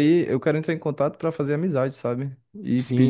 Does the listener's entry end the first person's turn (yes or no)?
yes